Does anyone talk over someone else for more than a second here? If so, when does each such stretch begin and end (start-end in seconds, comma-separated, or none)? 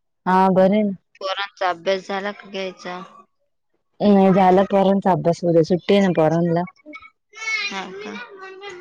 none